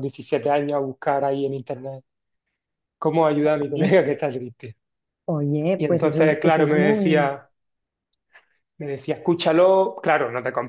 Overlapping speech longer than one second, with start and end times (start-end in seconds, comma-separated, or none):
5.8-7.4